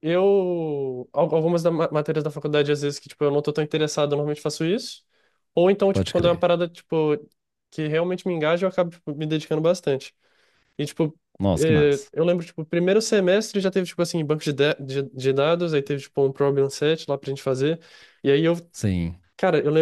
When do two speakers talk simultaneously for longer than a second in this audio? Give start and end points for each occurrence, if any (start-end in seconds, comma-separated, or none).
none